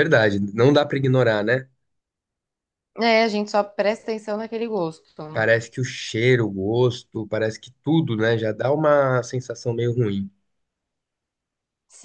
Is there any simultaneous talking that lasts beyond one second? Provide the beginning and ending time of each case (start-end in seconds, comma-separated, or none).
none